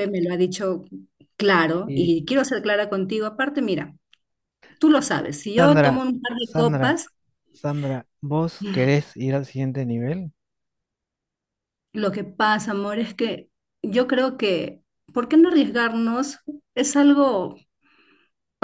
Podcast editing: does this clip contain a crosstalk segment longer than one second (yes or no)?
yes